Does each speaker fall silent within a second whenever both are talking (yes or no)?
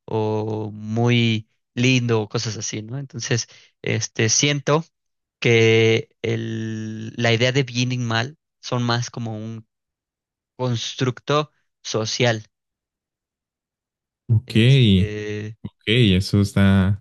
yes